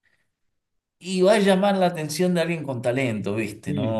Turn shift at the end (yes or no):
yes